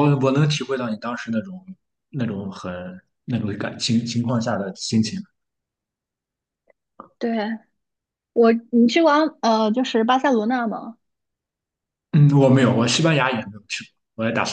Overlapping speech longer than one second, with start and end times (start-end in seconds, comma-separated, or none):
none